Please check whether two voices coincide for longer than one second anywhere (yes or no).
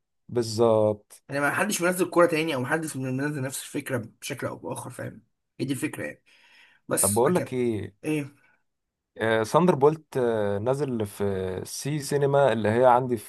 no